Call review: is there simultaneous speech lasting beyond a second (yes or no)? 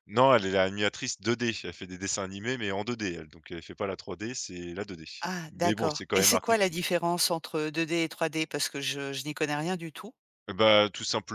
yes